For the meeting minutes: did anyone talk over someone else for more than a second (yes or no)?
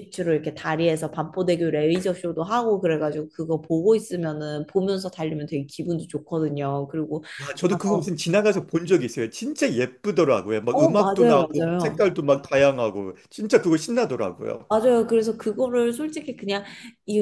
yes